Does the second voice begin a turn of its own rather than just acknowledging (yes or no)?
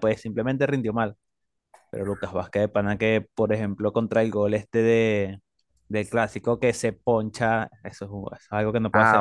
yes